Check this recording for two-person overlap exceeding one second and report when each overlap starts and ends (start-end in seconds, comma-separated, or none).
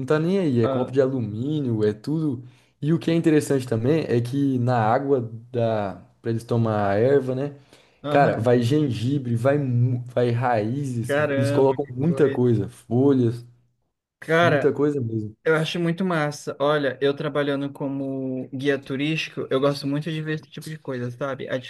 11.0-12.6